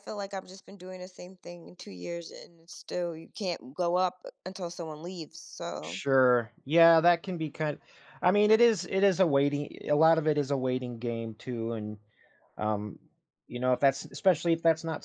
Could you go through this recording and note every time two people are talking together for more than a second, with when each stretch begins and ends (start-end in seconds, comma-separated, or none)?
none